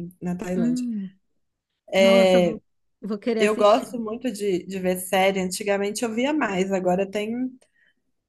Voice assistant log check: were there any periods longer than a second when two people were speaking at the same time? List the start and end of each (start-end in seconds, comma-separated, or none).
none